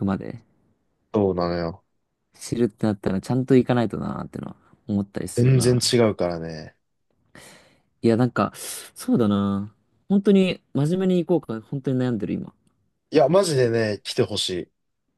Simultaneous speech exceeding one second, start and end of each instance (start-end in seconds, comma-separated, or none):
none